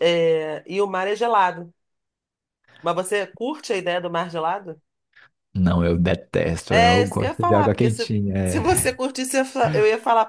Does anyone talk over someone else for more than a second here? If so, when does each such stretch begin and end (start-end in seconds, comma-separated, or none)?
6.7-9.0